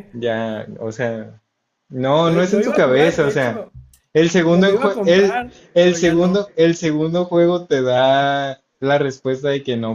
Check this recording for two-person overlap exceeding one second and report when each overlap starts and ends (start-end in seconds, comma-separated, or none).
2.2-3.7, 4.5-6.5